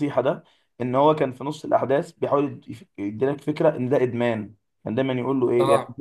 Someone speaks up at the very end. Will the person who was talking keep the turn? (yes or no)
yes